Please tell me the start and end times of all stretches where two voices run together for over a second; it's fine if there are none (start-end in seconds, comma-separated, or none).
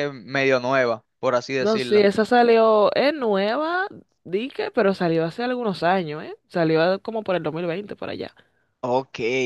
none